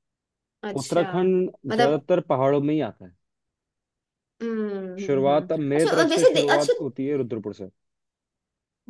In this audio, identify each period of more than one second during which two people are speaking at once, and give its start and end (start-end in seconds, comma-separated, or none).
5.0-6.7